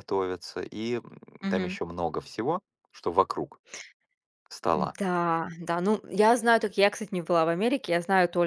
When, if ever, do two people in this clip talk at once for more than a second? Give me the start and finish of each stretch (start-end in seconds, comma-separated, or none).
none